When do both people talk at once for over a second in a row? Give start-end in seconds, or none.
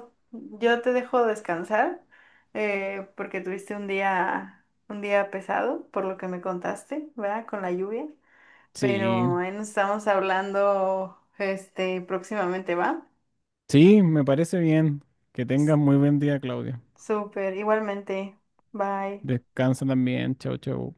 none